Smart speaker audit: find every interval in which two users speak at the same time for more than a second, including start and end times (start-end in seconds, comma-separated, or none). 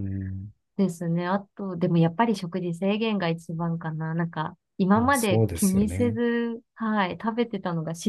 5.0-6.2